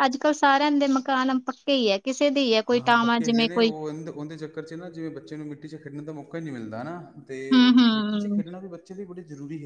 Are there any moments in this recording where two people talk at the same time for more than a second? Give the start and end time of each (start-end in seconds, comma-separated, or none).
none